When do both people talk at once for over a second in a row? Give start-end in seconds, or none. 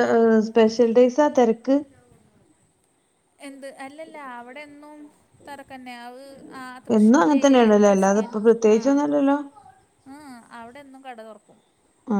7.0-9.0